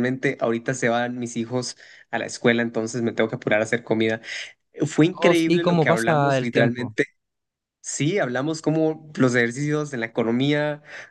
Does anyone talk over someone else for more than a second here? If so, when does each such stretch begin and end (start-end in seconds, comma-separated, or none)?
5.1-7.0